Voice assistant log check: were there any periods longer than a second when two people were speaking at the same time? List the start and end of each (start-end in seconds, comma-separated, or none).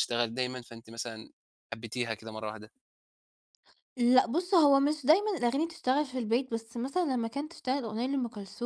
none